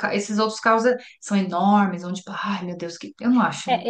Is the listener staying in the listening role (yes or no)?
no